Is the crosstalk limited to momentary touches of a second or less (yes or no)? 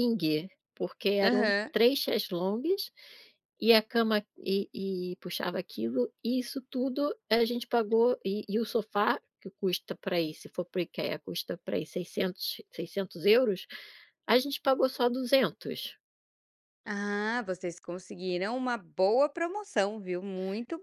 yes